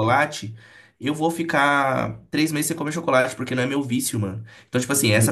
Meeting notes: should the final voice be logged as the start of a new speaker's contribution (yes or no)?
no